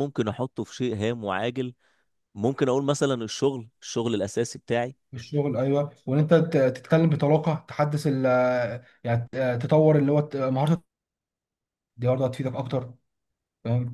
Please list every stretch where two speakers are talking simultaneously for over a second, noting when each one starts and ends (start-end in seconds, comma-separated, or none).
none